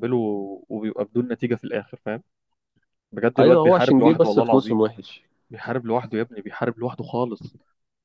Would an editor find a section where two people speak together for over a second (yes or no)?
yes